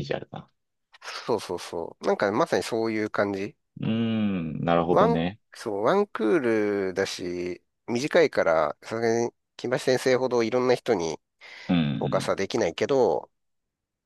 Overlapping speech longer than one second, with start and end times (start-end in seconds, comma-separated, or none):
none